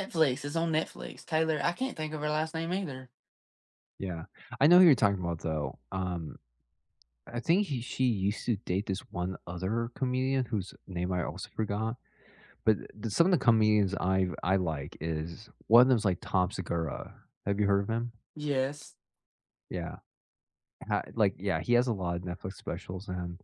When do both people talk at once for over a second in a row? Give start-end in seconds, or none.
none